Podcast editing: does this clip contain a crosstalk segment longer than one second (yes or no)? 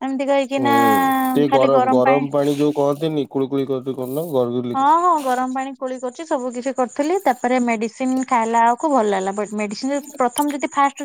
no